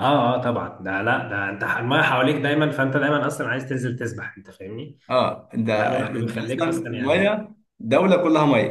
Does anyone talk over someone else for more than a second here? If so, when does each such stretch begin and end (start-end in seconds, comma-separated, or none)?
5.7-7.4